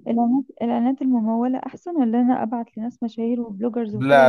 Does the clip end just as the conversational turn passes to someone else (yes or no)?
yes